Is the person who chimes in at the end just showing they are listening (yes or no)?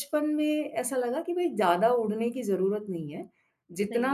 yes